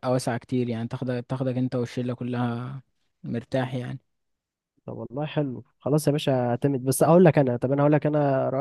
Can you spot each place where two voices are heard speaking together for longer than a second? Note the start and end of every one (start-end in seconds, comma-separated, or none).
none